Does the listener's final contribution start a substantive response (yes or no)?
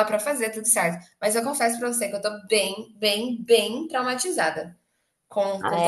yes